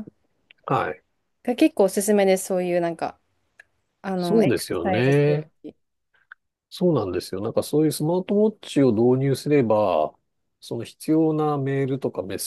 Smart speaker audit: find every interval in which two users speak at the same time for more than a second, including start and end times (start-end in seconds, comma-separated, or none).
4.2-5.5